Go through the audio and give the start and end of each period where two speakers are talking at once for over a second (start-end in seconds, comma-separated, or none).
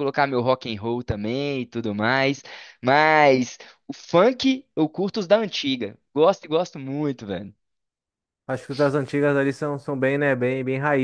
none